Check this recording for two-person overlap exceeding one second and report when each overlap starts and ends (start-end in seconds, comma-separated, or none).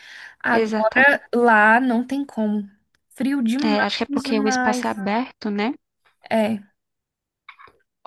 3.7-5.0